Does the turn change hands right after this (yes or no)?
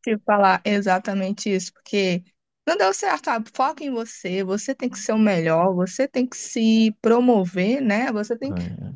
no